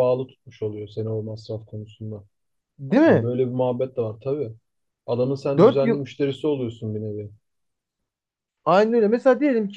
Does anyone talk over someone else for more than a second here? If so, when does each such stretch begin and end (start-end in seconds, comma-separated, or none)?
none